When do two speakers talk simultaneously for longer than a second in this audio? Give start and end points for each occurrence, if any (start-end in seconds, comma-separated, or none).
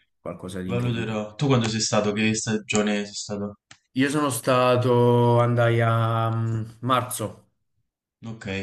none